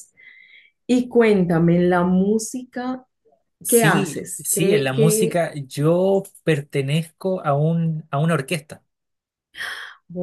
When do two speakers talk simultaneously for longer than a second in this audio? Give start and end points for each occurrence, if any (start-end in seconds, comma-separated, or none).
3.7-5.4